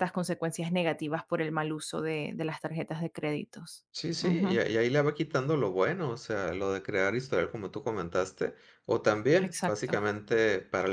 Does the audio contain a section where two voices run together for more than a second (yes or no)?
no